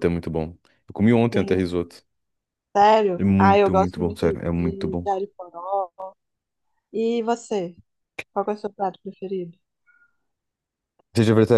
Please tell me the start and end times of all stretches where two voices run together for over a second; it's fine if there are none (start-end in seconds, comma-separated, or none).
3.2-5.1